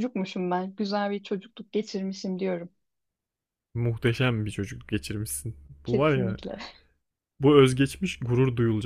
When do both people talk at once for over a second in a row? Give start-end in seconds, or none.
none